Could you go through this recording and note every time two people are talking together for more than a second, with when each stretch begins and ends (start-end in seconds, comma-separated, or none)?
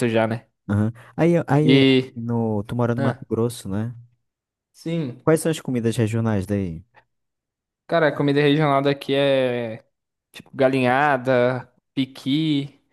none